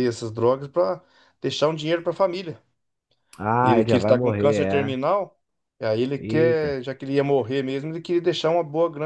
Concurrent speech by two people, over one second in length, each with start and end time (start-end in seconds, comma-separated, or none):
3.6-5.0